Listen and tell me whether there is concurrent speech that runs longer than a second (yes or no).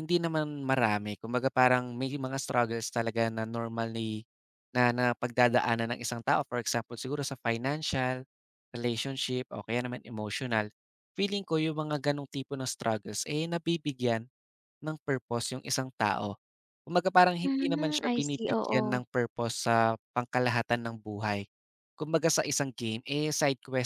yes